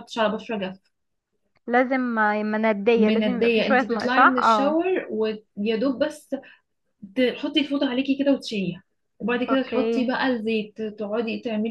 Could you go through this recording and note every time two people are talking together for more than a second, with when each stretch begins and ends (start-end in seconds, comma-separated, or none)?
3.0-4.8